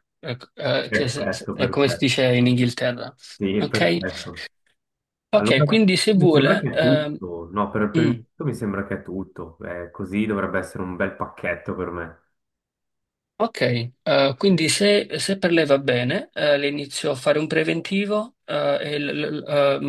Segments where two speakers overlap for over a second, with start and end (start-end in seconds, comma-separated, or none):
0.9-2.1, 5.3-7.2